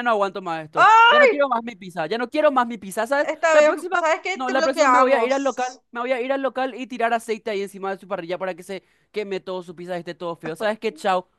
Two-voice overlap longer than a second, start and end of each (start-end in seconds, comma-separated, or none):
3.2-5.8